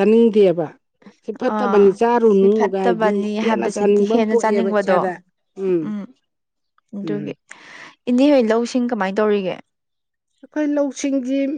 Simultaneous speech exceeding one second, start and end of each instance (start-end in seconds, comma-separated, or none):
1.5-5.0